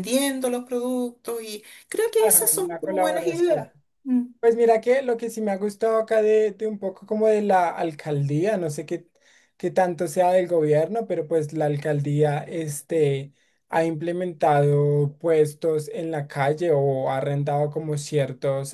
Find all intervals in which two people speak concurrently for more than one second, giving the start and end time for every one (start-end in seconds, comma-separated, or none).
2.0-3.6